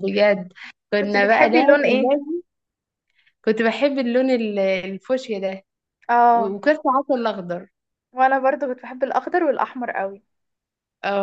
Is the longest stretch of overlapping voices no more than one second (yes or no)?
no